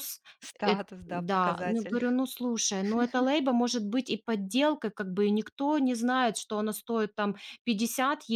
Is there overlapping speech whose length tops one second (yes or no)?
yes